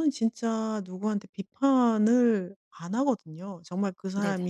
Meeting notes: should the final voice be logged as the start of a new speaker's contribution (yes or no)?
no